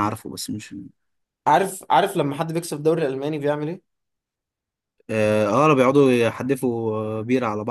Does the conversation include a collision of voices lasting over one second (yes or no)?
no